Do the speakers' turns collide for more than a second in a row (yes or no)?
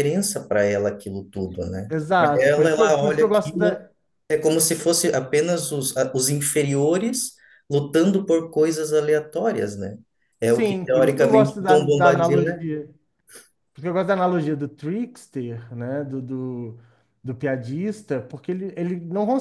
yes